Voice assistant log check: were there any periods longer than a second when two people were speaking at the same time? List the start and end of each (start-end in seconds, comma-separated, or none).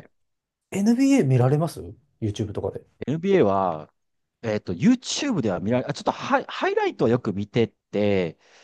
none